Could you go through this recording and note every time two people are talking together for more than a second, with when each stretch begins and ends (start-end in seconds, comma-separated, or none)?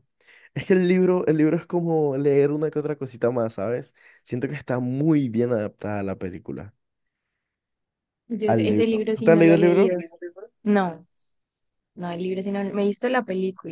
8.5-10.0